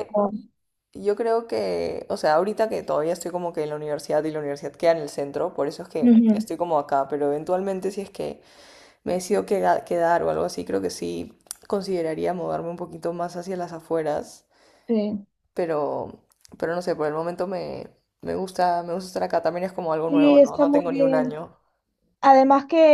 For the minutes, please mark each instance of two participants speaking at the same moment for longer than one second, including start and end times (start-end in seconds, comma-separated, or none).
20.1-21.4